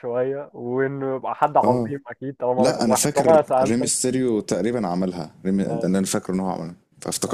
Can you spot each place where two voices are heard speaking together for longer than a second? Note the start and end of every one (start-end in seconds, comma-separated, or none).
2.6-4.1